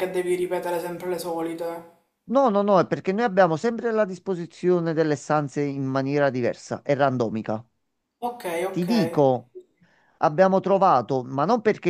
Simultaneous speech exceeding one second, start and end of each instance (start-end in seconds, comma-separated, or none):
none